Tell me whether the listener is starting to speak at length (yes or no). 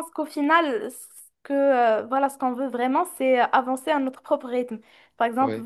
no